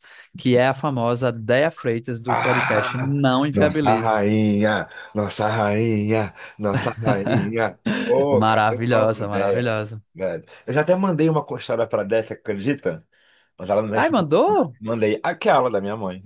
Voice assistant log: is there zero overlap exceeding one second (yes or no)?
no